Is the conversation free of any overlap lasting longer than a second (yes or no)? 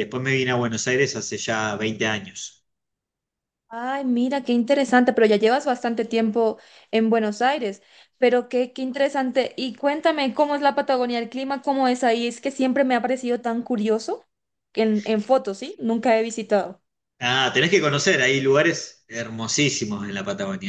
yes